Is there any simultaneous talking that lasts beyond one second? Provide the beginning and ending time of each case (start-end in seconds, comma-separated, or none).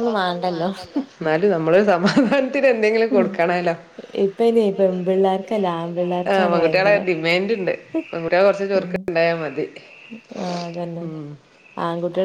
4.6-7.0